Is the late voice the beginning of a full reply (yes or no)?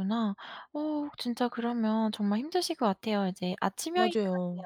no